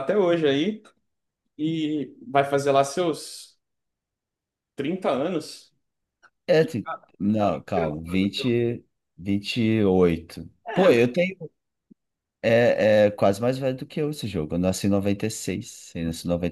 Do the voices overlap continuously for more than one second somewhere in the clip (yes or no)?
yes